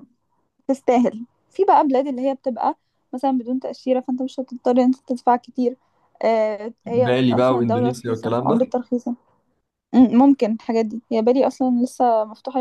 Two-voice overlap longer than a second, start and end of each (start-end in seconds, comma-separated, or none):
7.0-8.6